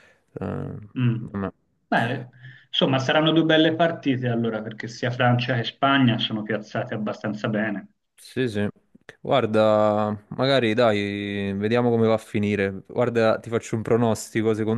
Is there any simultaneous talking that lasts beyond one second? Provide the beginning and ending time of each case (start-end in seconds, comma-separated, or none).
none